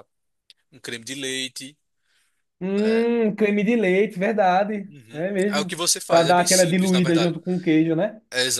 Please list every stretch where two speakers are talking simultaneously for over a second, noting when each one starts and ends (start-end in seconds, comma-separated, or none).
4.9-7.3